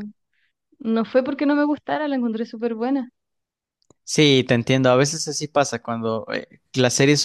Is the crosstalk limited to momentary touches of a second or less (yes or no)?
yes